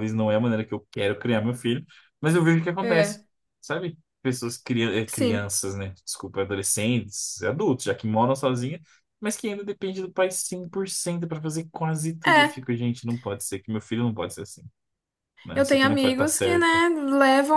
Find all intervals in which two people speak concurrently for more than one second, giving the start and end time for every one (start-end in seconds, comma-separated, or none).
15.5-16.8